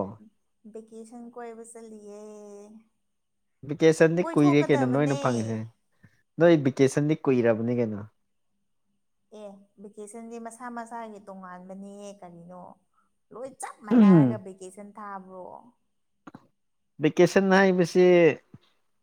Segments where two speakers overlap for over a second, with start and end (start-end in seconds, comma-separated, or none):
none